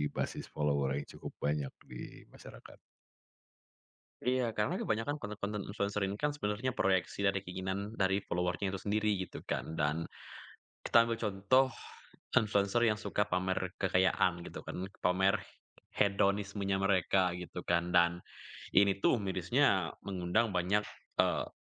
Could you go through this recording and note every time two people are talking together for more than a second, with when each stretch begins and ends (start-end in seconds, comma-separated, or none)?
none